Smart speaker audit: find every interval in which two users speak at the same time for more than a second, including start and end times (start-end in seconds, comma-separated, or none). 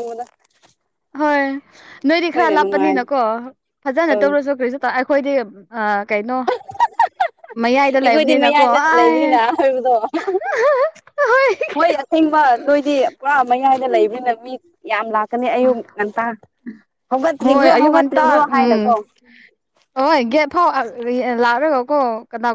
8.0-9.4, 17.4-18.9